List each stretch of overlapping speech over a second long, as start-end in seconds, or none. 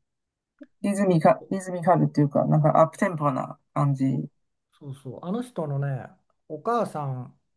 none